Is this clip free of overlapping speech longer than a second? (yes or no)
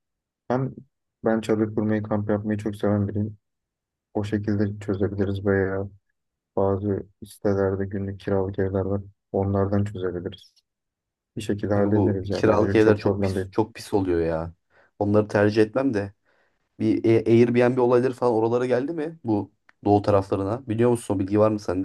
no